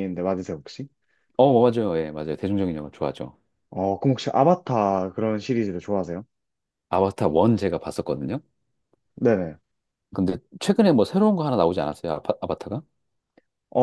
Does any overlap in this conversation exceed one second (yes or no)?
no